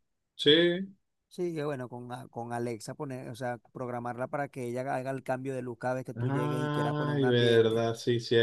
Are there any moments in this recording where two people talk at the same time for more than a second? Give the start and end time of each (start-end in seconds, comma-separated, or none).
6.2-7.8